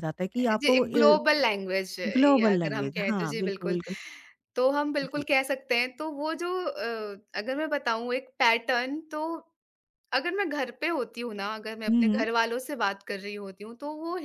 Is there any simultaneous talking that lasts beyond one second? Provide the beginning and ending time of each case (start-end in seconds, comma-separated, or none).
2.2-3.8